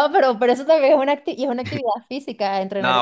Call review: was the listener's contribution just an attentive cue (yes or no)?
no